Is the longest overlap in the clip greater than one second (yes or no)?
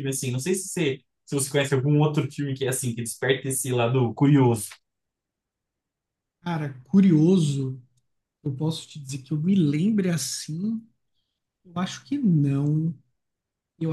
no